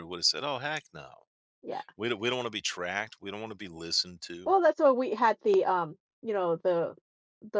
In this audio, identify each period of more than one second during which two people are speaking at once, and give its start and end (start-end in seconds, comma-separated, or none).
none